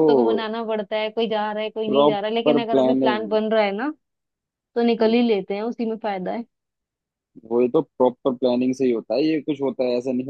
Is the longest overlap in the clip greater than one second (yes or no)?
yes